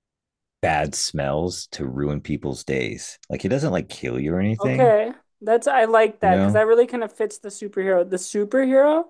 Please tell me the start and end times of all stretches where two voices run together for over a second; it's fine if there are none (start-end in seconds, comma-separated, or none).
none